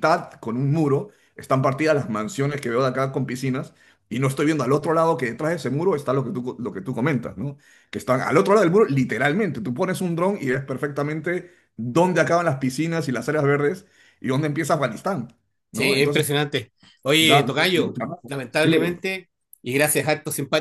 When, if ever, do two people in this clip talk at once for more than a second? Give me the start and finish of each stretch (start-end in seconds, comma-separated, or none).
17.2-19.0